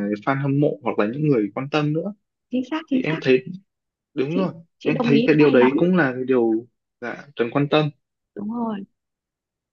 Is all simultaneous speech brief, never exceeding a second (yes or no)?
no